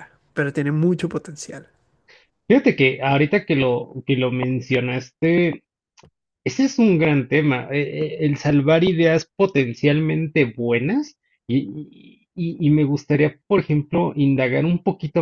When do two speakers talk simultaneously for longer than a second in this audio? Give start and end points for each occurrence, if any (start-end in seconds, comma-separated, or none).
none